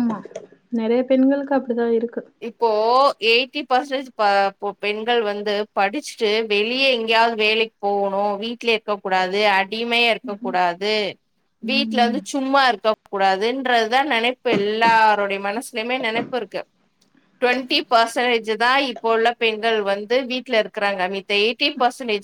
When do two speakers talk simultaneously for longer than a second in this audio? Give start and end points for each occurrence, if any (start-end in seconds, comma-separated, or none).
none